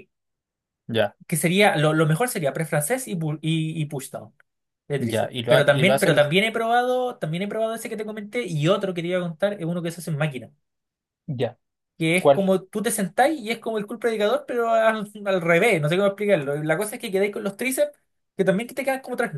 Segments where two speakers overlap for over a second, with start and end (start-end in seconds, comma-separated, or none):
5.0-6.3